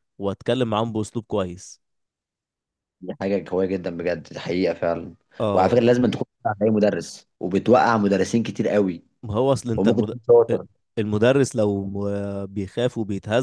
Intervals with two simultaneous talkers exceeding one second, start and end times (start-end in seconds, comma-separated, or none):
none